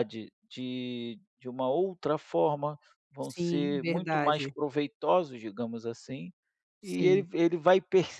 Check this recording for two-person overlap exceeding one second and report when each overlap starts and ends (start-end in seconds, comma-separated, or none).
3.2-4.5